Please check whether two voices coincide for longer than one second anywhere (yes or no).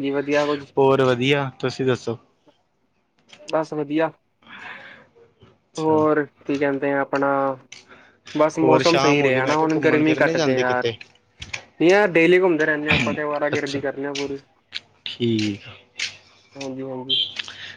yes